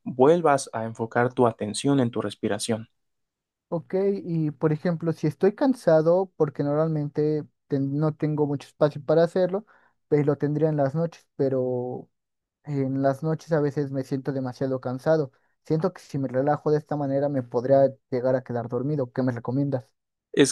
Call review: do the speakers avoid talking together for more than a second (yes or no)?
yes